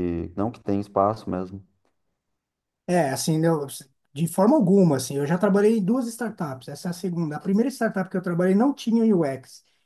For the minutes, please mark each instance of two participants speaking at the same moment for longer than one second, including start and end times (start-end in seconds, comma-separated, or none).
none